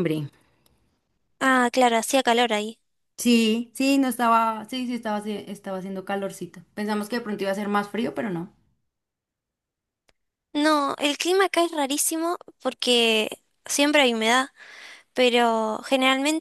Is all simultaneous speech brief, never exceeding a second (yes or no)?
yes